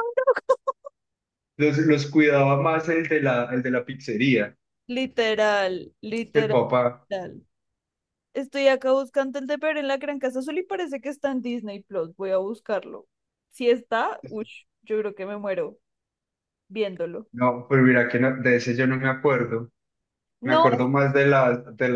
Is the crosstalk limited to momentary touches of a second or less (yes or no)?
yes